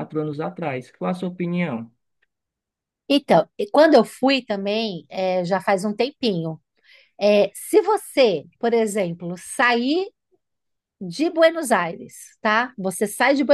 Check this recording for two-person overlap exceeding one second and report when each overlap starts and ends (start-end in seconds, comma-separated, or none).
none